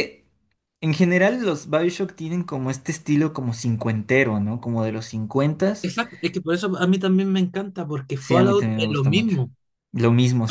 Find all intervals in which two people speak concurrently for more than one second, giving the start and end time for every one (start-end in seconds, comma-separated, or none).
8.2-9.4